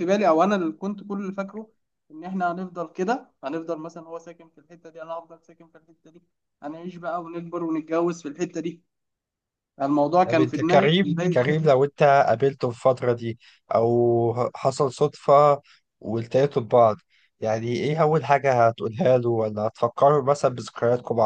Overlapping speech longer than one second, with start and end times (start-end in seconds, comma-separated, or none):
10.3-11.7